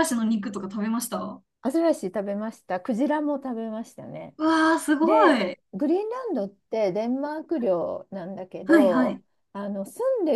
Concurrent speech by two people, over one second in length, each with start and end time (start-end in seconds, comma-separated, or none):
none